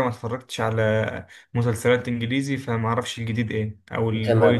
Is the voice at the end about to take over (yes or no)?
yes